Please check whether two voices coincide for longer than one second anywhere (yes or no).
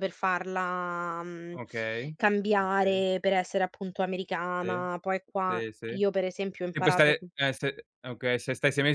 no